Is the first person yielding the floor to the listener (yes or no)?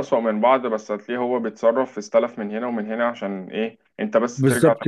yes